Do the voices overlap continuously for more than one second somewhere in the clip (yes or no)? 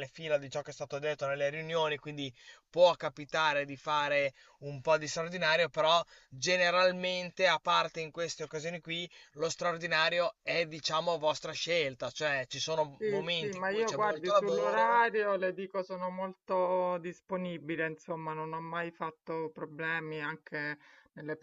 yes